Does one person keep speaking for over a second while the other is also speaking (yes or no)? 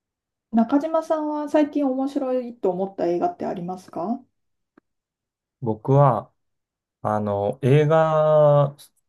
no